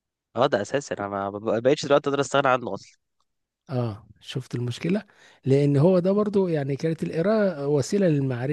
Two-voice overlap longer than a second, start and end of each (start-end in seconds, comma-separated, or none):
none